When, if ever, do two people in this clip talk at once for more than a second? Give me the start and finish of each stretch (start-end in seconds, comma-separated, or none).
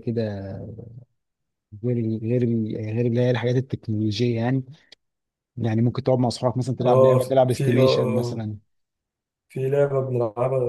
6.8-8.5